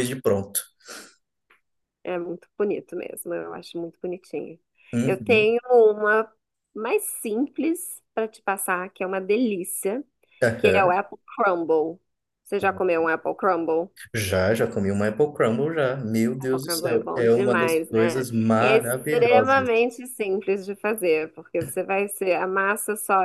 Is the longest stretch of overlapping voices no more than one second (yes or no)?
no